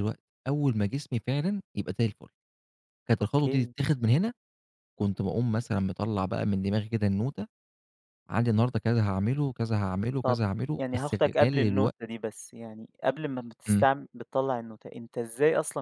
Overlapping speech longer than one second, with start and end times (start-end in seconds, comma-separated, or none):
10.2-12.0